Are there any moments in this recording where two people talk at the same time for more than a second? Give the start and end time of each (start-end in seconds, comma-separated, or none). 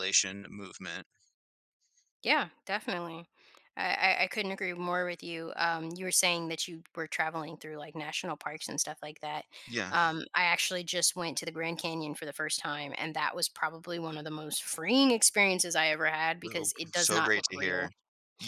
16.4-17.9